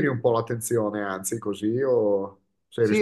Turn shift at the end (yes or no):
yes